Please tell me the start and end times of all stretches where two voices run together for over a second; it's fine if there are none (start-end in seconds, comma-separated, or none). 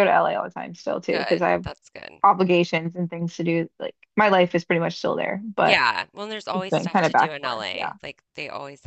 6.5-7.9